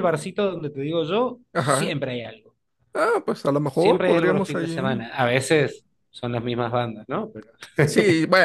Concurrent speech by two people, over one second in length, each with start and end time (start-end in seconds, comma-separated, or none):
3.6-5.0